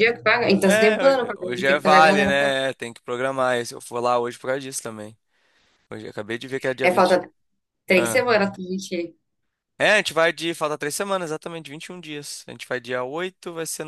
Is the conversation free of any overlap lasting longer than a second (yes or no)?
no